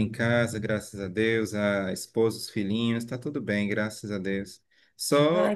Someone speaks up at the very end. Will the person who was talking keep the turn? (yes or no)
yes